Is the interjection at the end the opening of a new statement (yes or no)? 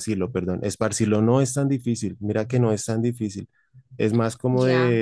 no